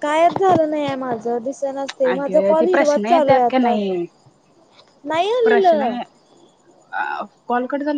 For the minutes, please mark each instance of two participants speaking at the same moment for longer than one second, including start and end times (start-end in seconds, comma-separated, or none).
2.1-3.8